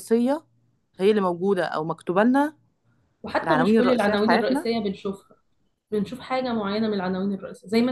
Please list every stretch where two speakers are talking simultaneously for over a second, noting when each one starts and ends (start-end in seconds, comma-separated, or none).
3.4-4.7